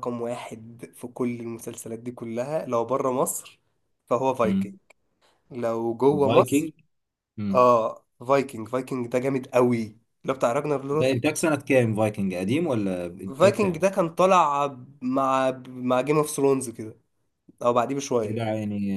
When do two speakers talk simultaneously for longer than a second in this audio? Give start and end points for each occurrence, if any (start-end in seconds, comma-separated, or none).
none